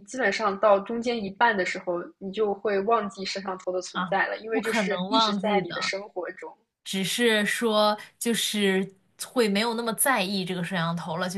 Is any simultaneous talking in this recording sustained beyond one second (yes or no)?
yes